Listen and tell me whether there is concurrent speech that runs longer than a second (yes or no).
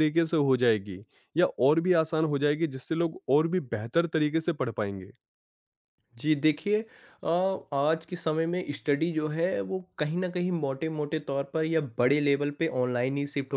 no